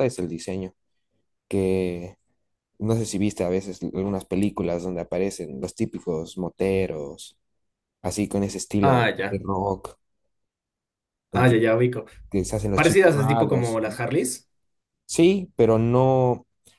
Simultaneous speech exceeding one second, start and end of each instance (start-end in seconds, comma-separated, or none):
12.7-14.0